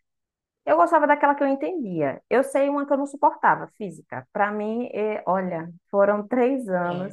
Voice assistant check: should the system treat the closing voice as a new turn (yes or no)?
no